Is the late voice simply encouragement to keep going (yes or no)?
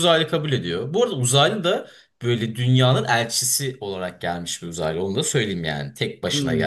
no